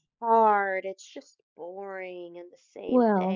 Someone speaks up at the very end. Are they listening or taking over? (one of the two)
taking over